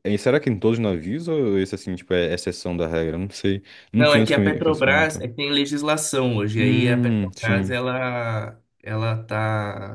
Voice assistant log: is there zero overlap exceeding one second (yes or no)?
no